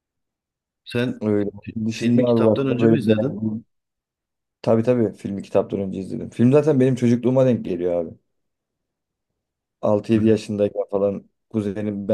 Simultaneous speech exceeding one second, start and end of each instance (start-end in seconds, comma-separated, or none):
1.6-3.4